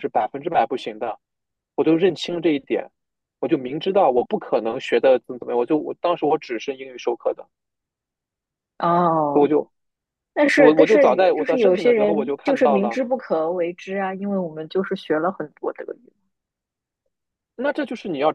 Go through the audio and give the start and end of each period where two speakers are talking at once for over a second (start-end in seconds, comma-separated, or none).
10.5-13.0